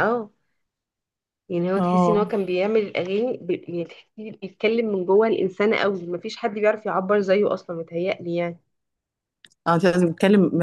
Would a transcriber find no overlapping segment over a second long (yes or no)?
yes